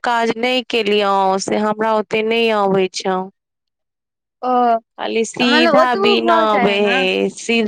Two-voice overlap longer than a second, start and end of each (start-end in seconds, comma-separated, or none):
5.4-7.0